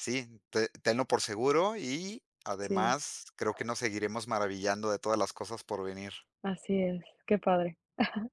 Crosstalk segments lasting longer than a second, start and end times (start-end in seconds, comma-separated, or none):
none